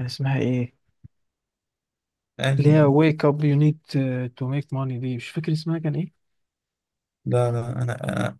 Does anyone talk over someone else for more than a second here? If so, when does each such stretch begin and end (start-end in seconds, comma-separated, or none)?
none